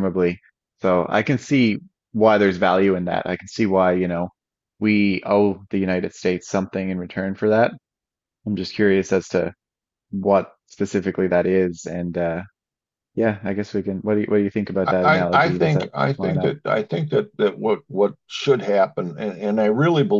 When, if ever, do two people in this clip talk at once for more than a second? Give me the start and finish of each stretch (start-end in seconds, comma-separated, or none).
14.8-16.5